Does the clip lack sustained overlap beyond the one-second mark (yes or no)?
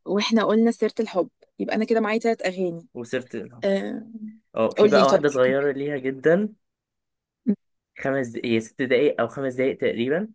yes